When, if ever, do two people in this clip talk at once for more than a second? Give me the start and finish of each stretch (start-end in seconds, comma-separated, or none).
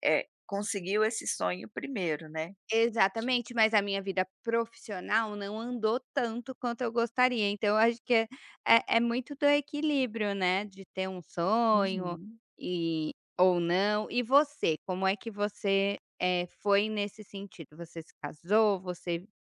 none